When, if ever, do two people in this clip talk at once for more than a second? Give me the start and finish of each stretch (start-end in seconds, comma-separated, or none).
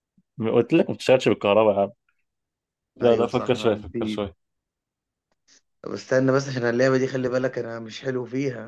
3.0-4.2